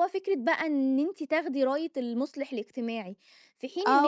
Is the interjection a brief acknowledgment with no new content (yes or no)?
no